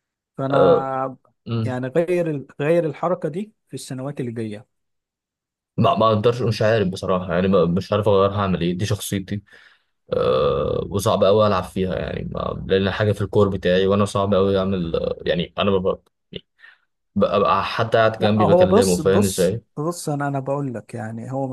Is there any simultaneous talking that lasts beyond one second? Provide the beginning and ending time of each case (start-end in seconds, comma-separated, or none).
18.2-19.6